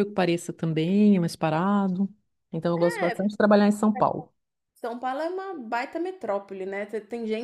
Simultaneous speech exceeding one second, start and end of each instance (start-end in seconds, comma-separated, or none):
none